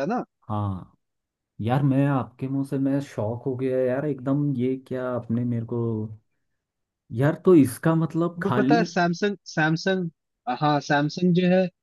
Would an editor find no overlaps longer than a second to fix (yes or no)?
yes